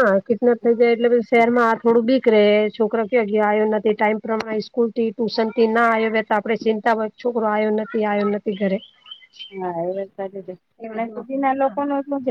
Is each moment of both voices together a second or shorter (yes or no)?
yes